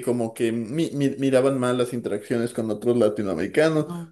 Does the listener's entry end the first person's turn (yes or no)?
no